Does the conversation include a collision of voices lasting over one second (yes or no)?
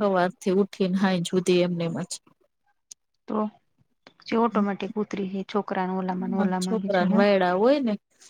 no